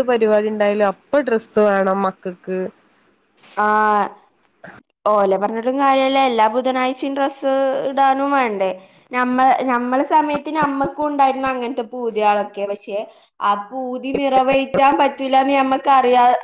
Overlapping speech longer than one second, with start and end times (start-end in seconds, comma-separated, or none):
none